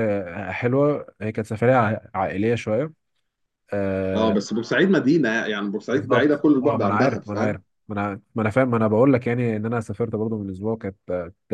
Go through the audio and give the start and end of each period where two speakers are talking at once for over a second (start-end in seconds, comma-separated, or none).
5.9-7.6